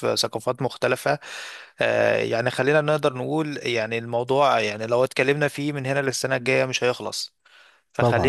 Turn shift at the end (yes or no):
no